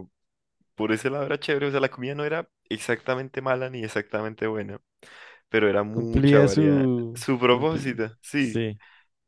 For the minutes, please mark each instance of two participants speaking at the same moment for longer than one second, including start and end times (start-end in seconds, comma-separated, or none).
5.9-8.6